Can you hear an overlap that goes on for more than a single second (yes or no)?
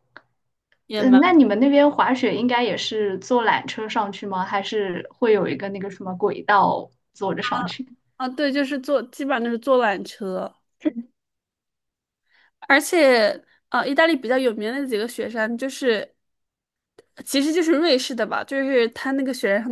no